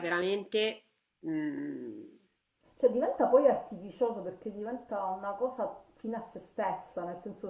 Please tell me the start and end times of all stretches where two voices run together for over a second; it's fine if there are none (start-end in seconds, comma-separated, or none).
none